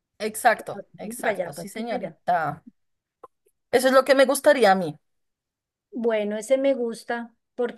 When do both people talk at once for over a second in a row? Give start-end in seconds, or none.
0.5-2.2